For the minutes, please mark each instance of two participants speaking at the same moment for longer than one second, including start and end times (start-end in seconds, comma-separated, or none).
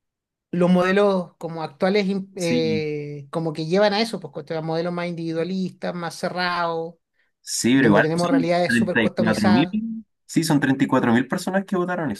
7.7-9.8